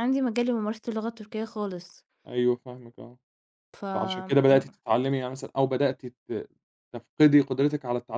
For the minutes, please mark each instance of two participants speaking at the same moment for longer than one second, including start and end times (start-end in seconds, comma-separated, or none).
none